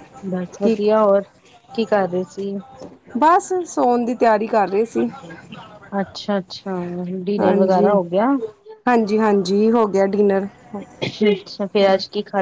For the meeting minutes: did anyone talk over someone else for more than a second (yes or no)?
no